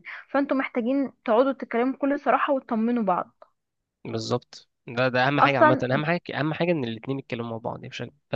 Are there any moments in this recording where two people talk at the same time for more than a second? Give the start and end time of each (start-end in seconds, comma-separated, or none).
none